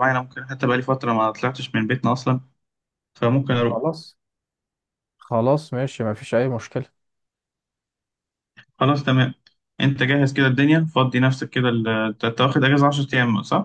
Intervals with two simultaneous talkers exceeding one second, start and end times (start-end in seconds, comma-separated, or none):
none